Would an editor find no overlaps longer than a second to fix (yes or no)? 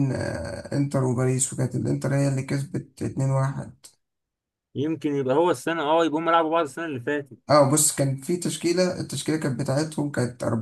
yes